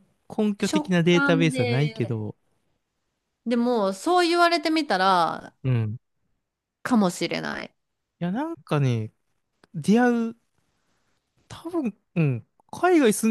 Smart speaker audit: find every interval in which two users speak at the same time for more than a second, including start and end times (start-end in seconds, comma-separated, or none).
0.6-2.2